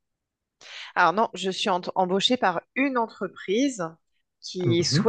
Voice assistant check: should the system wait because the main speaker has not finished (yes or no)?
yes